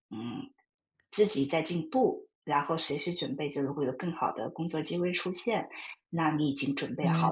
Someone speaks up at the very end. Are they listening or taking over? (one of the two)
listening